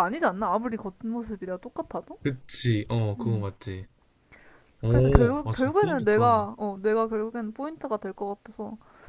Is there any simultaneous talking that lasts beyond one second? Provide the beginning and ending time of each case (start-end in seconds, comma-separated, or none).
4.9-6.5